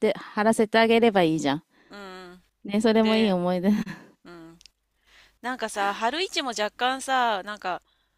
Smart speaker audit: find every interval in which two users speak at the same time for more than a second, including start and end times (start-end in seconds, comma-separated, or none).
none